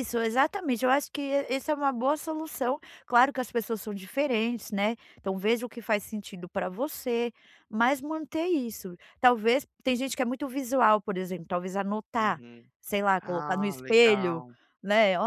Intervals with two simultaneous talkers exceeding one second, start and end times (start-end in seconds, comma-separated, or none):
13.2-14.4